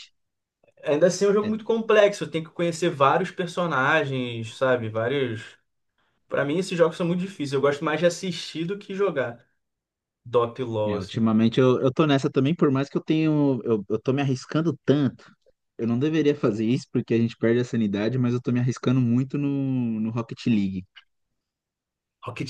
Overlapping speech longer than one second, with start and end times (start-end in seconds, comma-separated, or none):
none